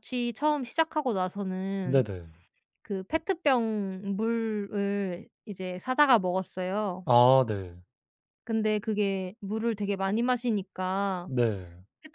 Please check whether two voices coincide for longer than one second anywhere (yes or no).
no